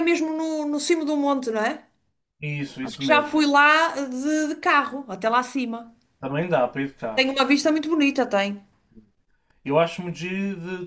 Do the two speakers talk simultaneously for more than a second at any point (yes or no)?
no